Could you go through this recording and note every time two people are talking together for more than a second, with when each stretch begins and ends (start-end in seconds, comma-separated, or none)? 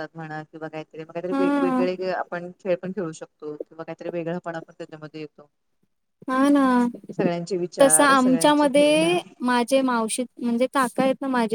7.8-9.2